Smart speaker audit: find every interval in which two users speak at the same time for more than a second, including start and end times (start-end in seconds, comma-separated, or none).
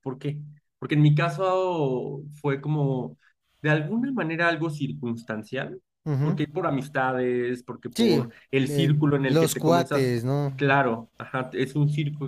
8.0-10.1